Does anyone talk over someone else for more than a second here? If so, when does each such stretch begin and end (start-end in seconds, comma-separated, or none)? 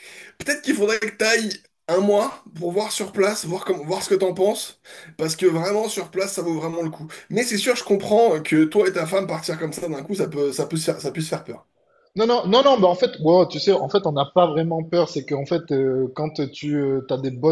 none